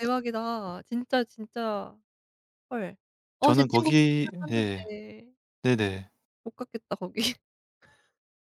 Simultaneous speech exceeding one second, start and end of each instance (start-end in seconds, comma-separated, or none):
3.4-4.9